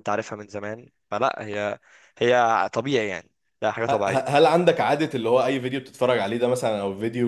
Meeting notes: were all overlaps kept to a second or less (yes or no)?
yes